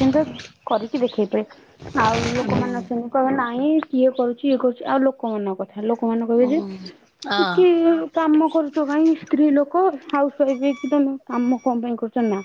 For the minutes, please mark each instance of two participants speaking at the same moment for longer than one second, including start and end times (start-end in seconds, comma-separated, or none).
6.4-7.9